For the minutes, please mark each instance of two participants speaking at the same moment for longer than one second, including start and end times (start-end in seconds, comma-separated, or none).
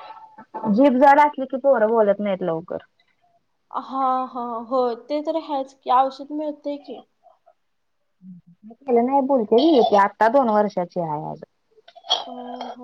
none